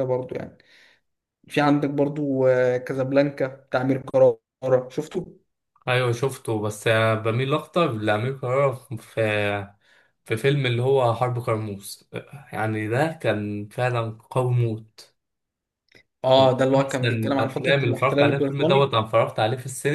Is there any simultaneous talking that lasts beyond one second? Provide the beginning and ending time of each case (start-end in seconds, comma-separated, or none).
16.4-18.9